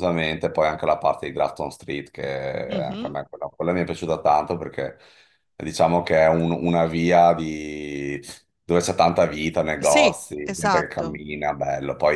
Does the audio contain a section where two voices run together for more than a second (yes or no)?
yes